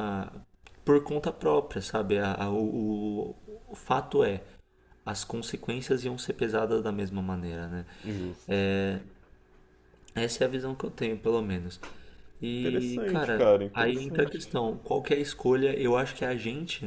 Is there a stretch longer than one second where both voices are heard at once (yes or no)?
yes